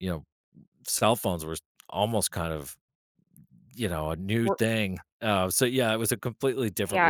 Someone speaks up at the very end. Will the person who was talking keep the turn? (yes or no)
no